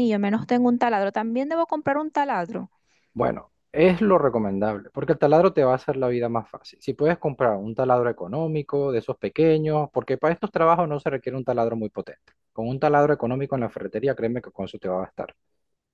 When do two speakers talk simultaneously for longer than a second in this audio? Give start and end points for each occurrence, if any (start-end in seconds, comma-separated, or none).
none